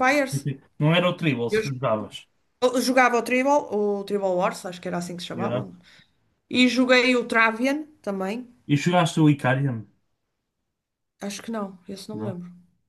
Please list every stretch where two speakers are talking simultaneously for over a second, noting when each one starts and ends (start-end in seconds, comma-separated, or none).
none